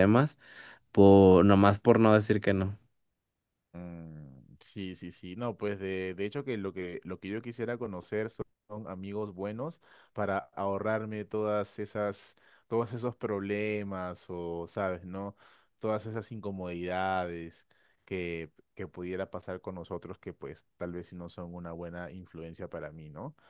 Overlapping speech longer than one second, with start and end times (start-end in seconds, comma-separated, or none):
none